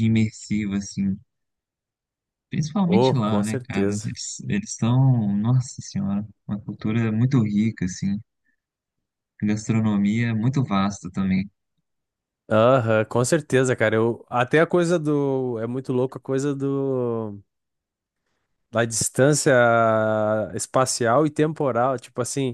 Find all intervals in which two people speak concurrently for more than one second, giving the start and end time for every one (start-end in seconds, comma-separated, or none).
2.9-4.2